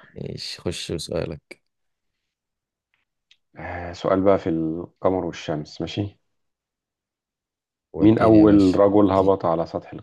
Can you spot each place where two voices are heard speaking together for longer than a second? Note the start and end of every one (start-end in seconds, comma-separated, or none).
8.0-9.3